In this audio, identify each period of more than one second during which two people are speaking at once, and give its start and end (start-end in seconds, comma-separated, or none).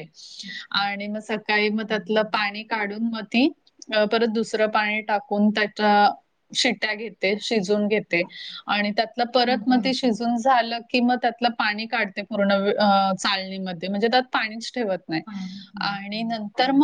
none